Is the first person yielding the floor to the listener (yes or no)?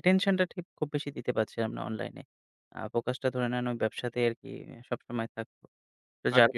no